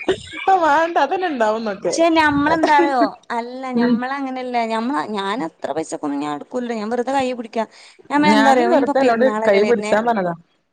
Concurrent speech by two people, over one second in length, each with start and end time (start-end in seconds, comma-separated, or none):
8.3-9.9